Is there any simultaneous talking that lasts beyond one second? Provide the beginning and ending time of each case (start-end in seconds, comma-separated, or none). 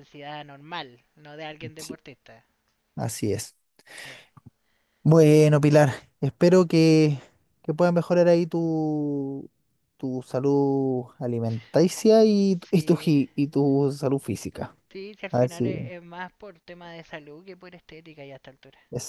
none